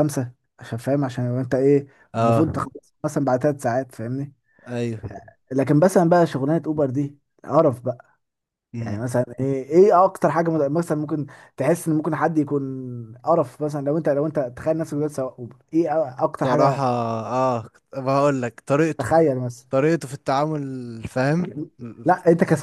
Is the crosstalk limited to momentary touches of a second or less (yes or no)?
yes